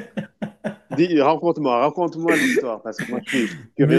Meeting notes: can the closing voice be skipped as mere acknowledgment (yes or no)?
no